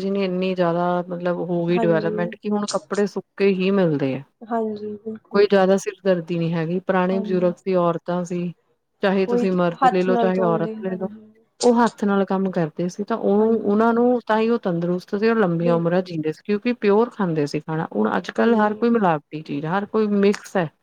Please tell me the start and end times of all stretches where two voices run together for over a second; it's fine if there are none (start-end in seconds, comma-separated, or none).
9.3-11.1